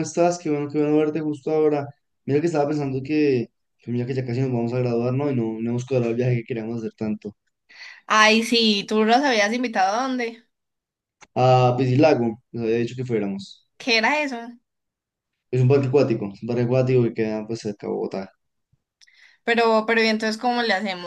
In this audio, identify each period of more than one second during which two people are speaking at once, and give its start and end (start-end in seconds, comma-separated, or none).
none